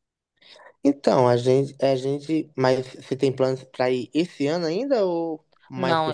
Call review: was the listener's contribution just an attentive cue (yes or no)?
no